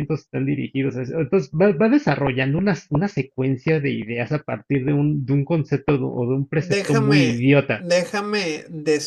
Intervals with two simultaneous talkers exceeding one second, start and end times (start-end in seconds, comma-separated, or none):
6.6-7.9